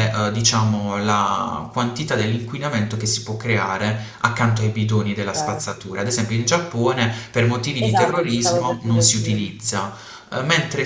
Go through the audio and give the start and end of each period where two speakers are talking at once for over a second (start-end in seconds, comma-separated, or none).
7.8-9.5